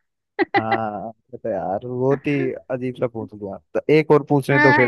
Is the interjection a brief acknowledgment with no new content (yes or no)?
no